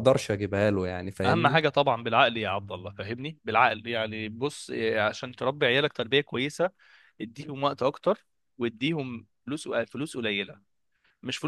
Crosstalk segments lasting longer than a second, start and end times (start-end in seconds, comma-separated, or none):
none